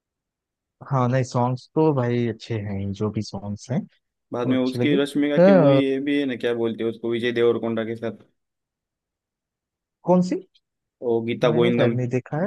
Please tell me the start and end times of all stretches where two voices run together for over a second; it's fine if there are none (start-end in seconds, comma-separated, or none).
4.5-5.8